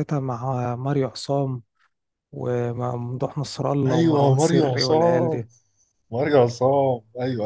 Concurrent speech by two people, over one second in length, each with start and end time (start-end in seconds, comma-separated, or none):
3.9-5.5